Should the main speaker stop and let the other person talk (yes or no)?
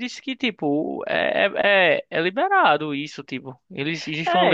no